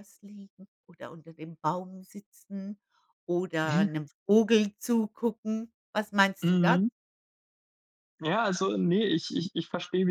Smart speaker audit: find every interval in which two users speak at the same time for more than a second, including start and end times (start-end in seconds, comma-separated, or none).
none